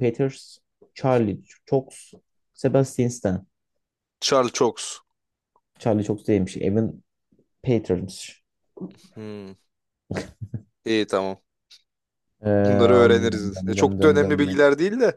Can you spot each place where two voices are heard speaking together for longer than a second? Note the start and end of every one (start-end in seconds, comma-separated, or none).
12.5-14.7